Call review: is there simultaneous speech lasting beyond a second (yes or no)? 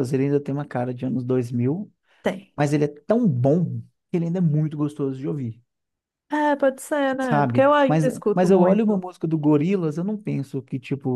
yes